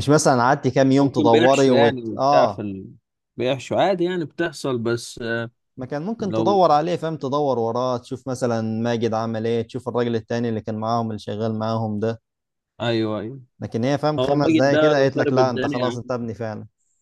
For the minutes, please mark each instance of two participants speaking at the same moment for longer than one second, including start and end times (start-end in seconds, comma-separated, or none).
1.0-2.6, 14.2-16.0